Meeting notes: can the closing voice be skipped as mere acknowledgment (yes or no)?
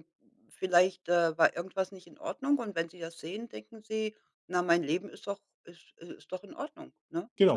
no